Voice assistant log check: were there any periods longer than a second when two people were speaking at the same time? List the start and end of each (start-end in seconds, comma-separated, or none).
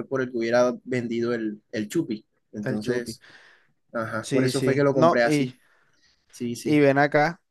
4.2-5.5